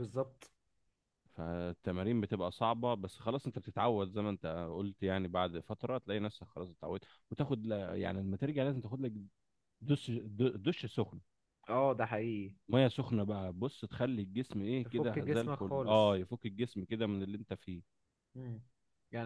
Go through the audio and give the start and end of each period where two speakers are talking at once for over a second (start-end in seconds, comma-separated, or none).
14.8-16.1